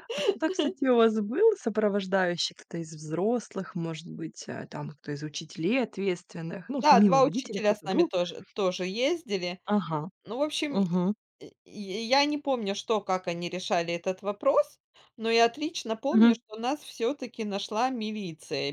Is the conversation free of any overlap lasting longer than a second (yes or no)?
no